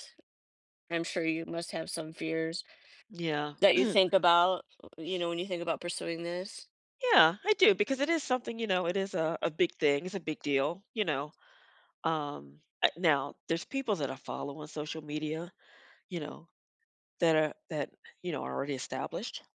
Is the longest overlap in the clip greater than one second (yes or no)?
no